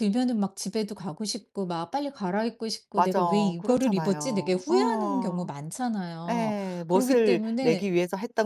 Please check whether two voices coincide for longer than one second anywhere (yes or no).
yes